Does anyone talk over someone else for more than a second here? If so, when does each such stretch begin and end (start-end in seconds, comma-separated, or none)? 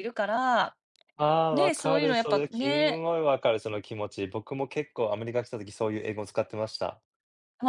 1.5-3.0